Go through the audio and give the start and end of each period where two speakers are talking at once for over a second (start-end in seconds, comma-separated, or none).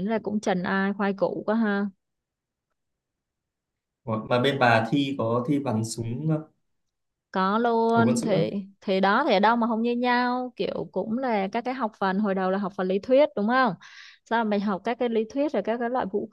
none